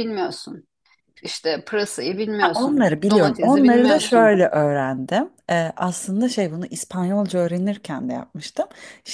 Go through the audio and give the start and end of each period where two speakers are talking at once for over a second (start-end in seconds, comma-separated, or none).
2.4-4.4